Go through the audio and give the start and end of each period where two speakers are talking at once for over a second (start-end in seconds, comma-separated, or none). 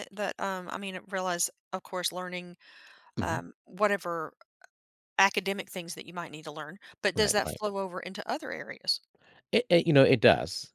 none